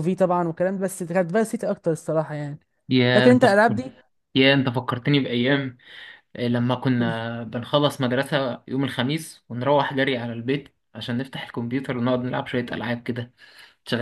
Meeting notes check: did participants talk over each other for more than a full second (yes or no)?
no